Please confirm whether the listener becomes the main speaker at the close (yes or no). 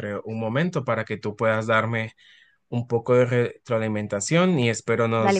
no